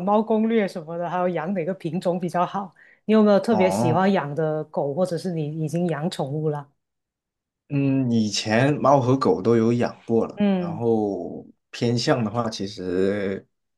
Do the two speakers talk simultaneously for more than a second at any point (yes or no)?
no